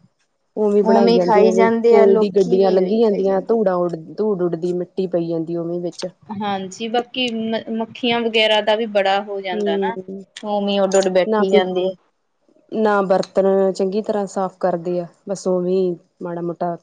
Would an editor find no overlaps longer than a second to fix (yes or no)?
no